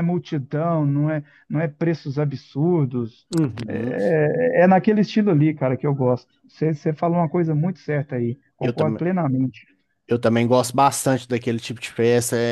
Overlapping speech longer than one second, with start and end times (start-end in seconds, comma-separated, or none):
none